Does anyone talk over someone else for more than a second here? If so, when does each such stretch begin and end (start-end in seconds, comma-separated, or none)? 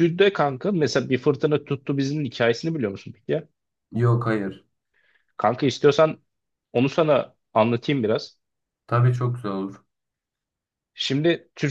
none